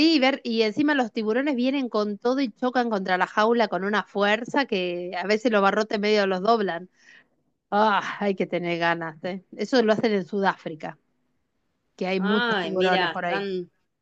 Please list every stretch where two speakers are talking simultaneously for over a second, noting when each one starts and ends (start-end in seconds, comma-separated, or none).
12.2-13.5